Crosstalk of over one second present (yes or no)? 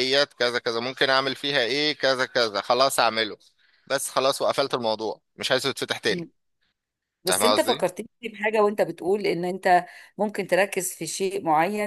no